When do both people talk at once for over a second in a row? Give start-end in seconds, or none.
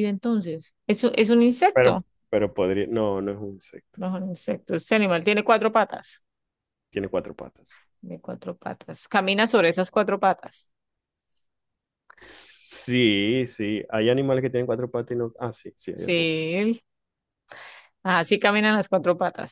none